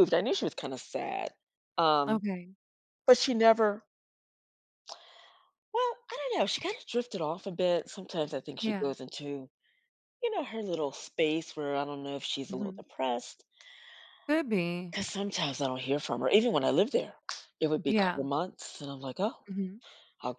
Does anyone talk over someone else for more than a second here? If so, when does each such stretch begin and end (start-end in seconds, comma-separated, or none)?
none